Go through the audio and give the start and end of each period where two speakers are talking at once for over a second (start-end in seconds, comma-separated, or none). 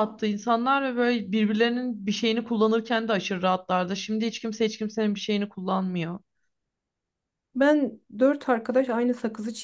none